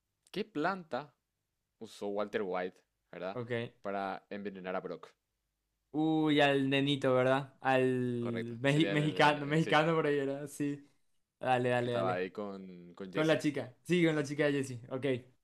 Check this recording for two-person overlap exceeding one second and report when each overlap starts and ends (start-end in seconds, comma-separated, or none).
8.2-9.8